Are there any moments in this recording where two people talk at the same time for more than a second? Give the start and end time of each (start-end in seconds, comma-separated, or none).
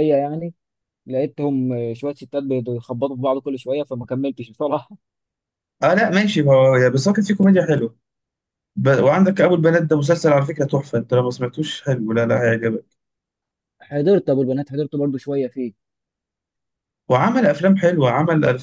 none